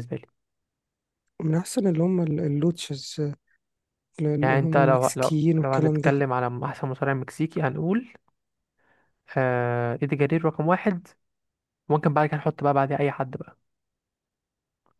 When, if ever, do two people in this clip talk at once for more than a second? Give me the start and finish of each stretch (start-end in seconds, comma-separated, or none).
4.4-6.1